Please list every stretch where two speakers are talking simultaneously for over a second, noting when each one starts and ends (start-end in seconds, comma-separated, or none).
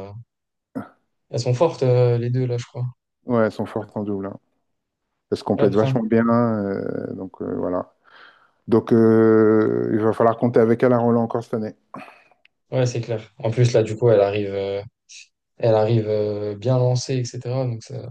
none